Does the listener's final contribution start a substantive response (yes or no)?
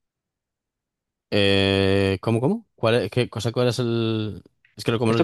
yes